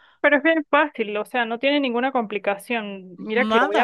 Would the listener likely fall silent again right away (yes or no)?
yes